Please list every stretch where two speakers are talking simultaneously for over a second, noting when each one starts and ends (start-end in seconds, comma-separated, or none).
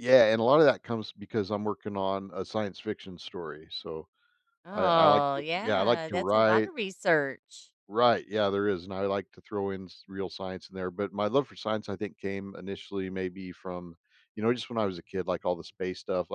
4.7-6.7